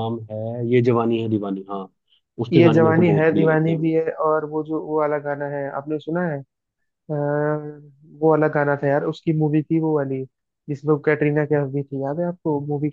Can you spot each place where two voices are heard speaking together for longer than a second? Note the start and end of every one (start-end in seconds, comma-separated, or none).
2.5-3.9